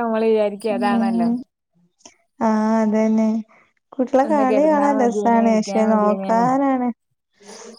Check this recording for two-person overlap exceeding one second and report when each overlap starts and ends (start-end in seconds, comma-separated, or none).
4.3-6.5